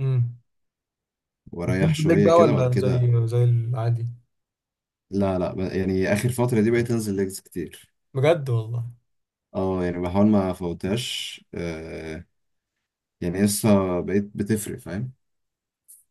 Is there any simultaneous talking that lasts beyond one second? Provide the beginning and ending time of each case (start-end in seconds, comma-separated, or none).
1.6-3.1